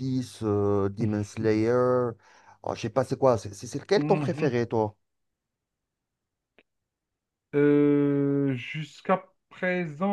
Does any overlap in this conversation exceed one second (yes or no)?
no